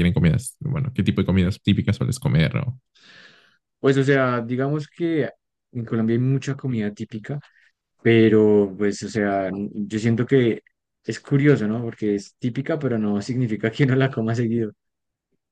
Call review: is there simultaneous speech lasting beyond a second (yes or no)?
no